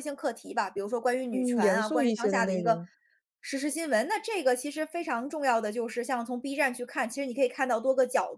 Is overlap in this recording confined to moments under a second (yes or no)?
no